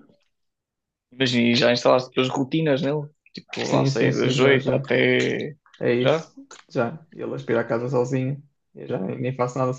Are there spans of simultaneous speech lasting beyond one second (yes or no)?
yes